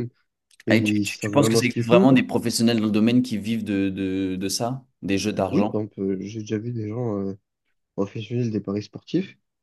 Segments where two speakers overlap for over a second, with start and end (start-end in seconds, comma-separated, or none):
0.7-2.1